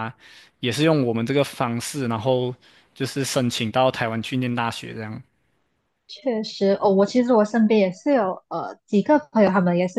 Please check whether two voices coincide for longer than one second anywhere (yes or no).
no